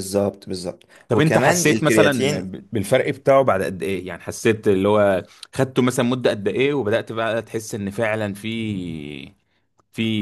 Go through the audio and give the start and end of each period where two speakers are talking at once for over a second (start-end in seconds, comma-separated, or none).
1.1-2.5